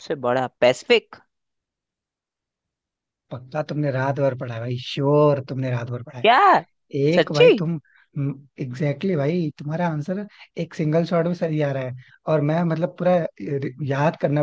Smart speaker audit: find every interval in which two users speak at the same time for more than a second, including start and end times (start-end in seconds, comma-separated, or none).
none